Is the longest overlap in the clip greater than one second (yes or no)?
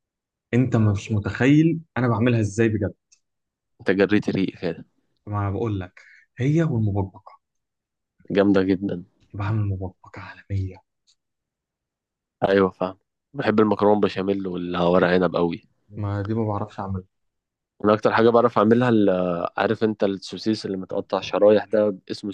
no